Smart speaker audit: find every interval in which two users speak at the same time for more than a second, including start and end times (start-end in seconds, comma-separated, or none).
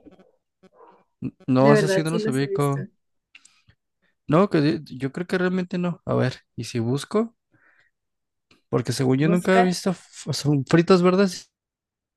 1.6-2.8